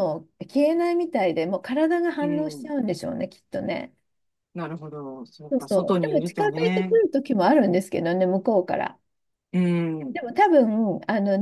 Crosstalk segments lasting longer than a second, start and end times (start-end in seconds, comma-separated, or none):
5.5-7.0